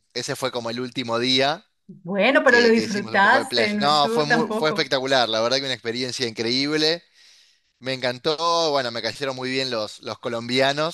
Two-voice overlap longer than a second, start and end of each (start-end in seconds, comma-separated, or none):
2.5-4.9